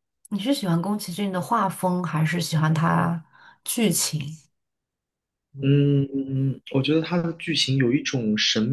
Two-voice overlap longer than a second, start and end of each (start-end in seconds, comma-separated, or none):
none